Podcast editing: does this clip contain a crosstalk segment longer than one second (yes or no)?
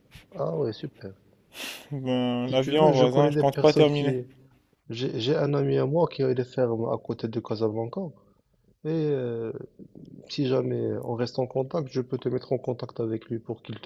yes